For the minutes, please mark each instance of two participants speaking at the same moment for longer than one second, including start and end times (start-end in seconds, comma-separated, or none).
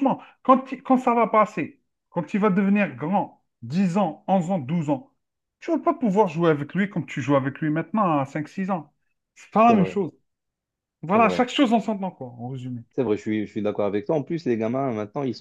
none